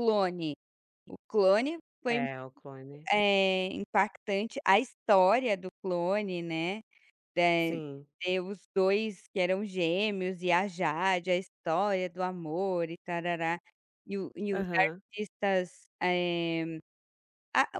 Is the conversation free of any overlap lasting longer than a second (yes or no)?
yes